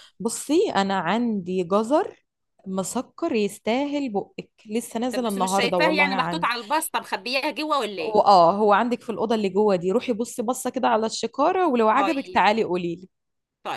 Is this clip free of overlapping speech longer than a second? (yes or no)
no